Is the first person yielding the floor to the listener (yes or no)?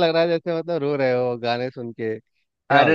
yes